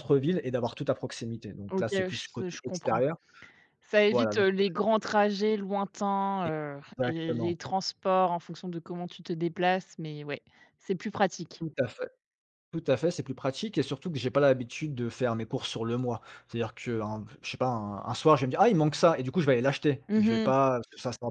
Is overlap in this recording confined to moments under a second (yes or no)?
no